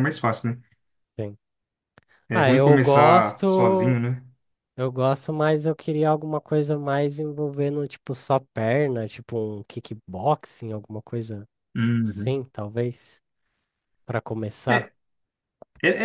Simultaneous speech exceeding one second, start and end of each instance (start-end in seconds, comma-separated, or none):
2.3-4.0